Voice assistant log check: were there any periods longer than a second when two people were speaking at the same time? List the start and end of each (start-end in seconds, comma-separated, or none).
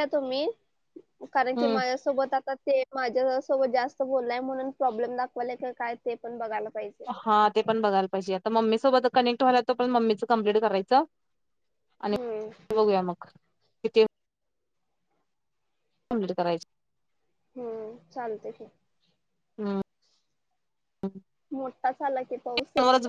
none